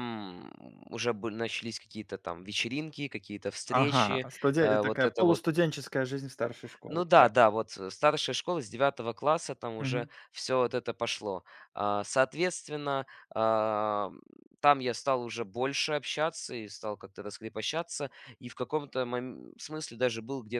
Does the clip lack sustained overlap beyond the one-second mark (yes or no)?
no